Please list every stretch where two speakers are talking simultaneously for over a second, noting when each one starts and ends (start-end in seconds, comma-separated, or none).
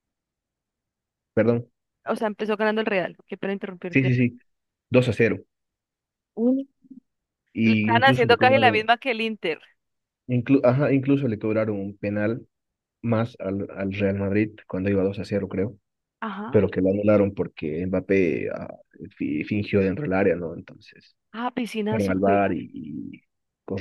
7.6-8.9